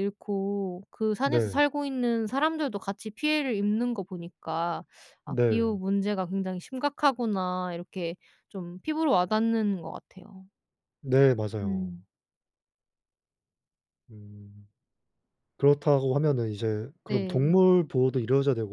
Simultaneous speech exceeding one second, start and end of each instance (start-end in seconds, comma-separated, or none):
none